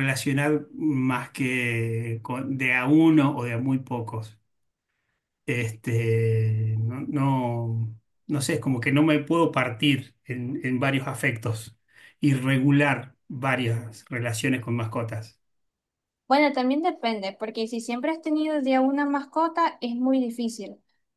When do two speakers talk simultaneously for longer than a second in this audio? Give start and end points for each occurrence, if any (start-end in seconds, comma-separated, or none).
none